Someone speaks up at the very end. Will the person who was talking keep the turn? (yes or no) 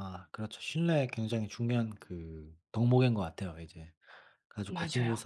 yes